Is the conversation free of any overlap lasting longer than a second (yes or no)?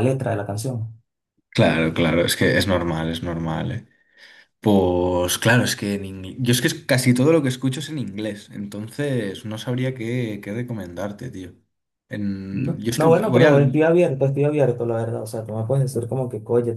no